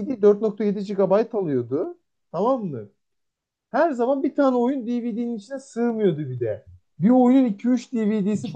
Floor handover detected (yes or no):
yes